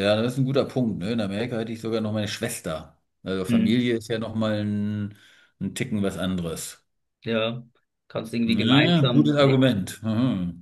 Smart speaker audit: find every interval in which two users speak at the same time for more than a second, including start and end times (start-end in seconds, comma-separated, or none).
8.4-9.7